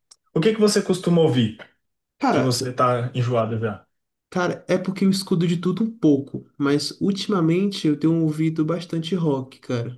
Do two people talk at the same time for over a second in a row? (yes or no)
no